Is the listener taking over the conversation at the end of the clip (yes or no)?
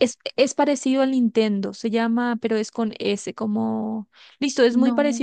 no